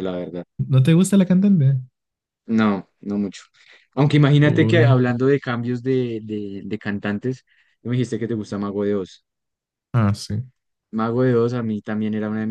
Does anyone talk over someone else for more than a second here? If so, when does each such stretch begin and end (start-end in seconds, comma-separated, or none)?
none